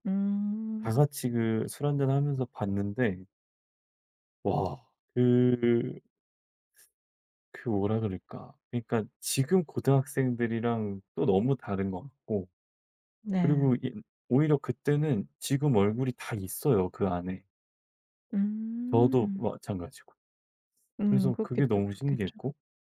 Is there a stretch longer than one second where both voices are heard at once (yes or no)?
yes